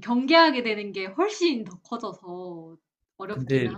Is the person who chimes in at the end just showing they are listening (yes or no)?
no